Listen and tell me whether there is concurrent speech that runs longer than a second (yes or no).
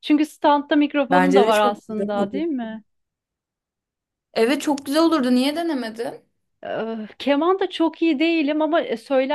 yes